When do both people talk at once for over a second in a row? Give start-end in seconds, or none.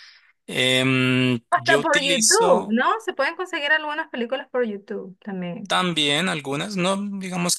1.5-2.8